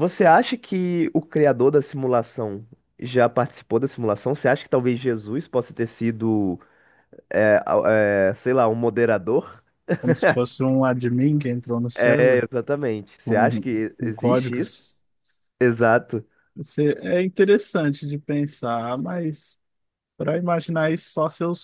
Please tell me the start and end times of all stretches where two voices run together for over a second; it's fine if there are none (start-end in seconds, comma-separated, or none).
13.2-14.8